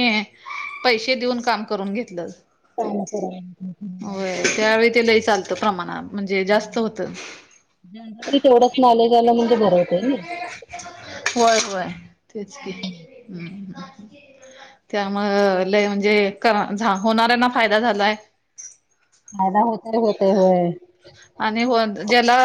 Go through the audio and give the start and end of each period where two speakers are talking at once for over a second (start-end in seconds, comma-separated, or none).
none